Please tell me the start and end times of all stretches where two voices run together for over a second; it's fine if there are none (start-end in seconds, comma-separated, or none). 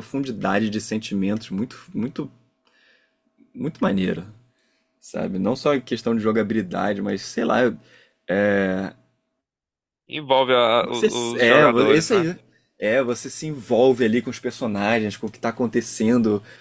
10.8-12.3